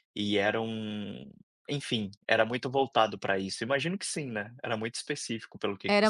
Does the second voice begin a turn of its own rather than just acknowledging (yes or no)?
yes